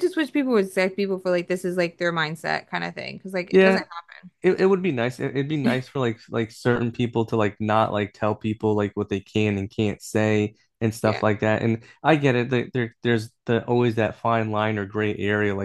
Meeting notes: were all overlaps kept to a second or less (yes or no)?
yes